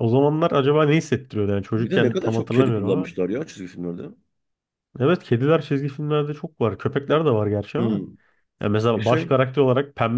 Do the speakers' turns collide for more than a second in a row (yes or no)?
yes